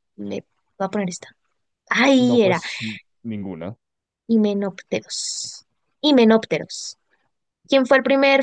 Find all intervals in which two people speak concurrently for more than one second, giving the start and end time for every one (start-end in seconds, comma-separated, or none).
none